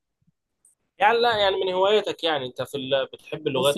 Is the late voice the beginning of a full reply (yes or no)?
yes